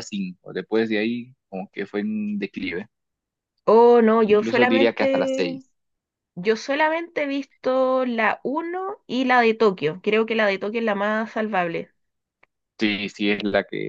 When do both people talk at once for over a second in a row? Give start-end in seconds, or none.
4.3-5.6